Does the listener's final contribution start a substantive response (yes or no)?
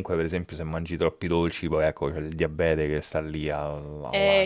yes